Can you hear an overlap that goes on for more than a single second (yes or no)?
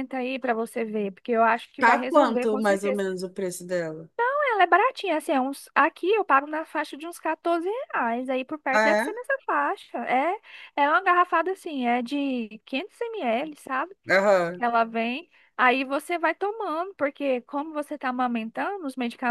yes